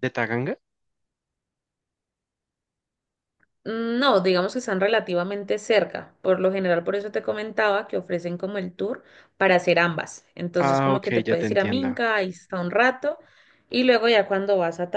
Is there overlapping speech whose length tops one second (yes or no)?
yes